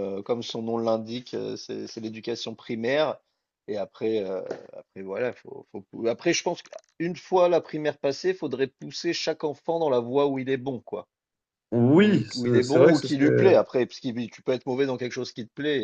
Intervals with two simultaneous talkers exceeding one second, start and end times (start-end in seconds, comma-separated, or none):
11.9-13.5